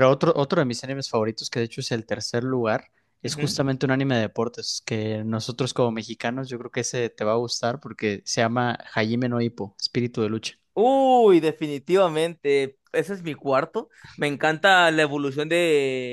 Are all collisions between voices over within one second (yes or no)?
yes